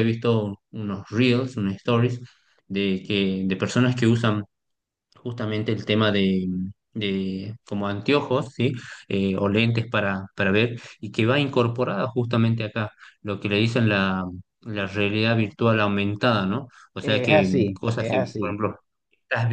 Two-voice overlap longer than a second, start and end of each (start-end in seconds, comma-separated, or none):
17.0-18.6